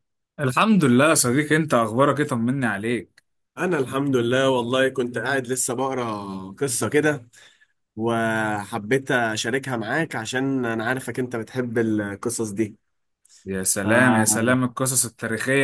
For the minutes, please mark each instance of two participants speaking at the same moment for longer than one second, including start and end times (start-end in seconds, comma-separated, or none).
none